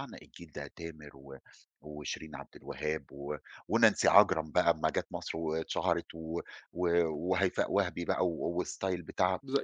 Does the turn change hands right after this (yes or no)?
yes